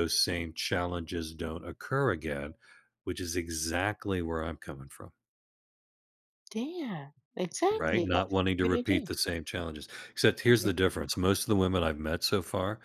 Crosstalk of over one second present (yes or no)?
yes